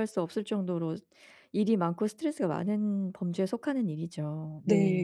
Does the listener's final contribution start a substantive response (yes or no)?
yes